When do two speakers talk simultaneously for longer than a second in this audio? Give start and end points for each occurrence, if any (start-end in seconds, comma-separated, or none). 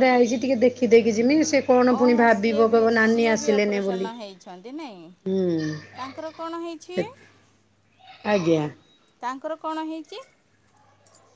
2.0-4.1